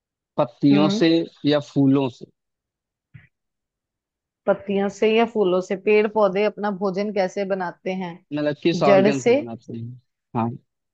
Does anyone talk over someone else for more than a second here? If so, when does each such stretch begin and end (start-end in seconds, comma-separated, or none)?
none